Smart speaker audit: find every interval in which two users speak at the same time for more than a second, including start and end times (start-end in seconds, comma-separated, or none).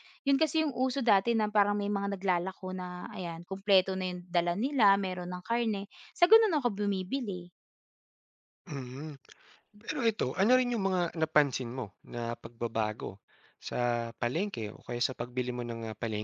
none